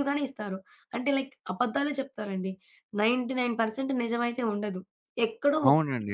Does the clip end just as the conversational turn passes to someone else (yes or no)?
yes